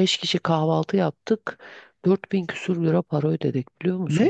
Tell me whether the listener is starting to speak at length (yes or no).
no